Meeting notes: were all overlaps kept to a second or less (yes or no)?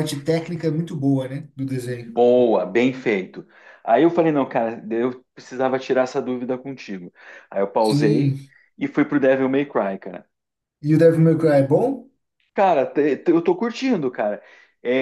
yes